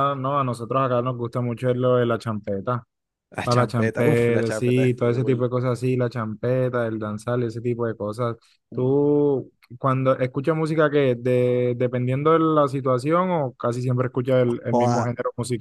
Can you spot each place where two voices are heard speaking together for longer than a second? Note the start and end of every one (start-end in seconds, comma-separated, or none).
3.4-5.4